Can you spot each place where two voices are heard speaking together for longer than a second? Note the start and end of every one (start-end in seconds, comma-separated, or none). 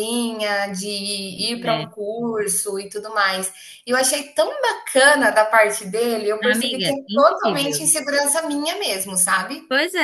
6.4-7.9